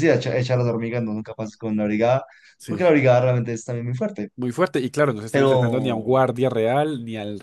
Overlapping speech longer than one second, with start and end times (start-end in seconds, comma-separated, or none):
none